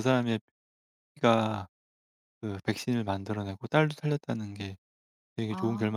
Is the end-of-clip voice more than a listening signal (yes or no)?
yes